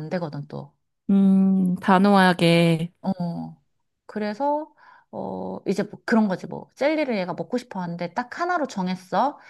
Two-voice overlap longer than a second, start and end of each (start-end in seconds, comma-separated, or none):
none